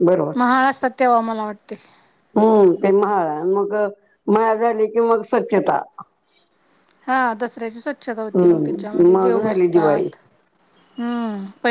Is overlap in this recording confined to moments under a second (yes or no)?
no